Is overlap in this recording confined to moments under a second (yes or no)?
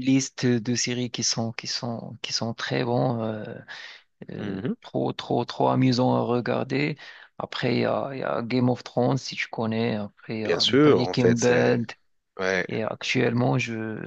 no